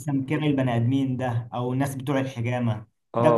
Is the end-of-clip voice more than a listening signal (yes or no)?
no